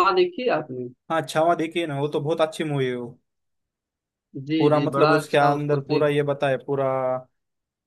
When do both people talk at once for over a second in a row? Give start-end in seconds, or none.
4.6-6.1